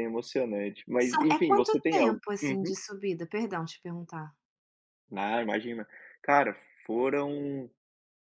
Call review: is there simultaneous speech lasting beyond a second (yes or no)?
yes